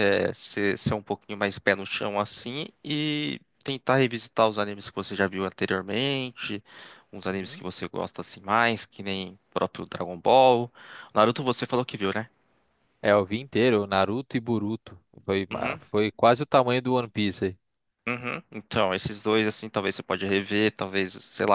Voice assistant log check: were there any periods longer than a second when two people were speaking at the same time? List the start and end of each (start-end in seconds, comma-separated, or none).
none